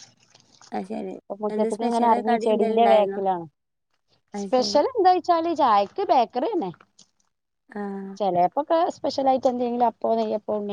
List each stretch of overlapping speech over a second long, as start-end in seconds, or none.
1.5-3.2